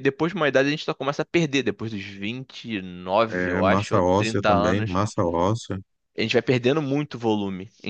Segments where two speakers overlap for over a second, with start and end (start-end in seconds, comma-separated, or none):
3.3-5.0